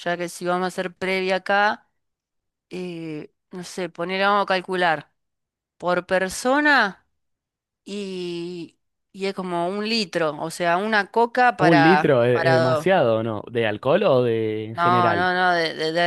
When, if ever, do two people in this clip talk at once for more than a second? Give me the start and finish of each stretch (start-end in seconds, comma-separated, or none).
11.6-12.9